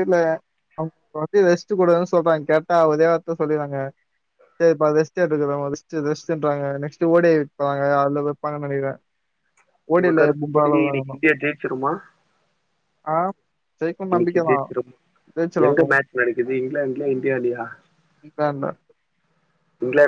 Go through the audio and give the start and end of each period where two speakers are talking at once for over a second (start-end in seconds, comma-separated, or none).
none